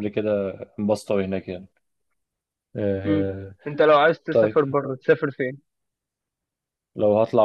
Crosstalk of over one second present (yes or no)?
no